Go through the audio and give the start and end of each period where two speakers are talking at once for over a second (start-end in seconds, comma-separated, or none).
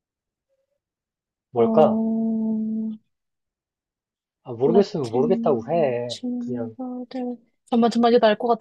4.7-6.8